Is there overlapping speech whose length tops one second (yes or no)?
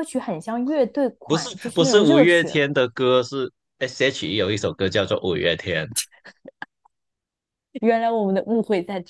yes